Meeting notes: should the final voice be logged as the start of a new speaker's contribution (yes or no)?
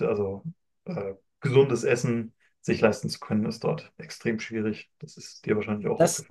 yes